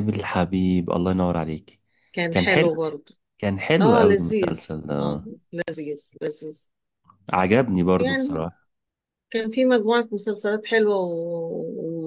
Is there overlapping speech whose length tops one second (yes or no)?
yes